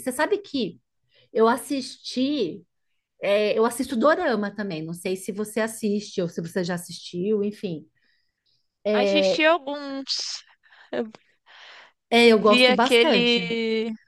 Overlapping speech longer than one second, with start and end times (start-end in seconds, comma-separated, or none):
12.2-13.5